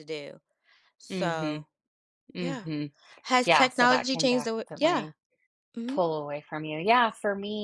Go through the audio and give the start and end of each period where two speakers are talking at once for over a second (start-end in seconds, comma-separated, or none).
3.4-5.1